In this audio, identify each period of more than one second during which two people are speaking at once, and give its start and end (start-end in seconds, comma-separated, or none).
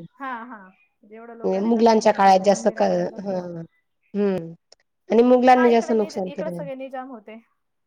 1.7-3.4